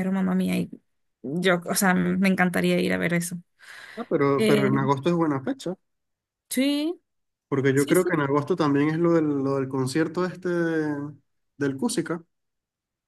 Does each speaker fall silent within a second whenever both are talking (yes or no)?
yes